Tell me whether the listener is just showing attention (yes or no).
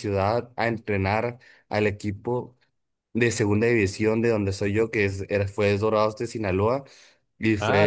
no